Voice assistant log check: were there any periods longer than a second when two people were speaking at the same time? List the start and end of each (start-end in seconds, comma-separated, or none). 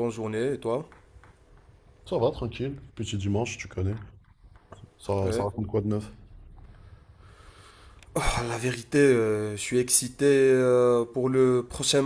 none